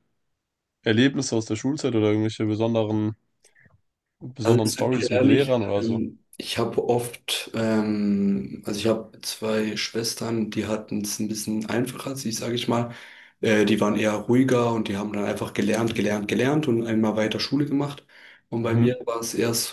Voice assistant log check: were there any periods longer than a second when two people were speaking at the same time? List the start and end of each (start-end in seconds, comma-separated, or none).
4.4-6.0